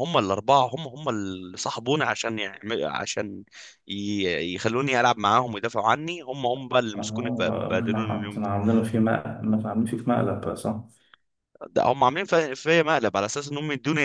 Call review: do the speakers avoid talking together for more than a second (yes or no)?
no